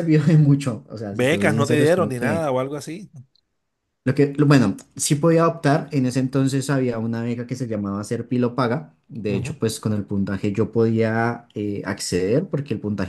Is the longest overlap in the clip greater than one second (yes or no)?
yes